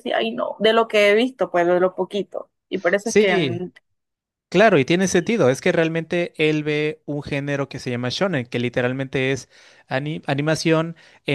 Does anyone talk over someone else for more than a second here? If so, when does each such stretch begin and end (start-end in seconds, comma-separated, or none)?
none